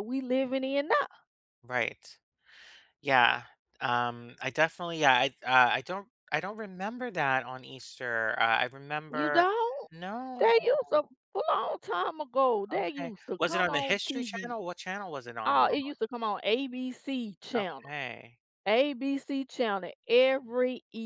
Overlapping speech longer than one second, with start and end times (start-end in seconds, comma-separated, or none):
12.7-14.5